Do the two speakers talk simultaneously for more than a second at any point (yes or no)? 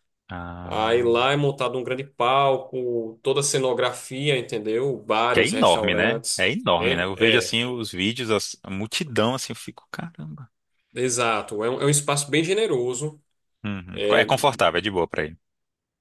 yes